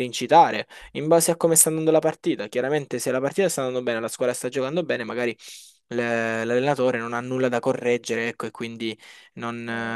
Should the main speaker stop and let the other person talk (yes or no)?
no